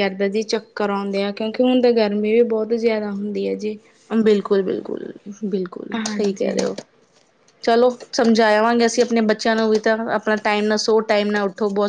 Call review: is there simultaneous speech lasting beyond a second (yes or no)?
no